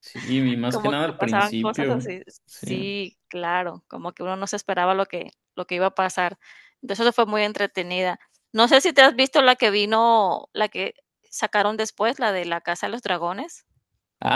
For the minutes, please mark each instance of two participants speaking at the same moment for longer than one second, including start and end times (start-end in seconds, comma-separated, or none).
0.7-2.7